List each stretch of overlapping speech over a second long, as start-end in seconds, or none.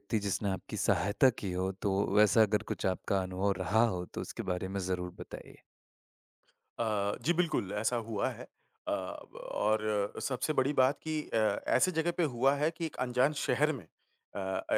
none